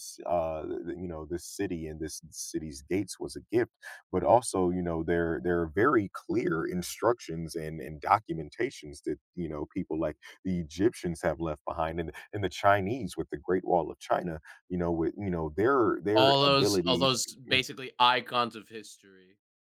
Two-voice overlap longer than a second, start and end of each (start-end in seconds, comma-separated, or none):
16.1-17.6